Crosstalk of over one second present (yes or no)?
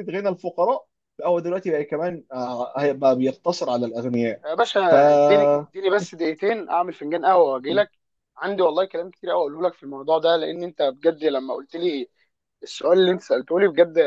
no